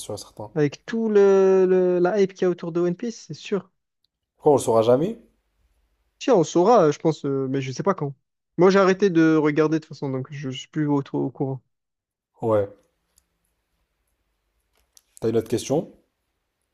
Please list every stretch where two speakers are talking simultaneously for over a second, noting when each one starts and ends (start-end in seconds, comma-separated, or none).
none